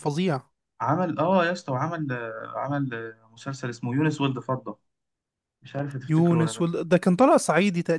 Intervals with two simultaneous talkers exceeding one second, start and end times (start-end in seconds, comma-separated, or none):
none